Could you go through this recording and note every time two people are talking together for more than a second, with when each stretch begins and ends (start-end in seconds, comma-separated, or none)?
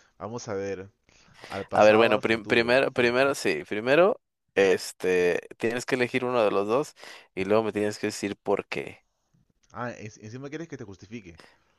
1.7-3.1